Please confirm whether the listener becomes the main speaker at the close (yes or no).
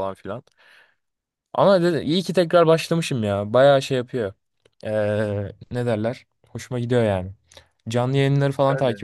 no